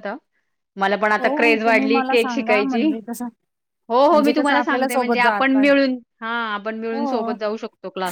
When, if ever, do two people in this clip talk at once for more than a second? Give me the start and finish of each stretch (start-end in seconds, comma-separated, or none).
1.2-2.8, 4.1-5.6